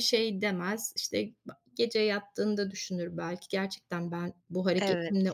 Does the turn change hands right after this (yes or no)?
no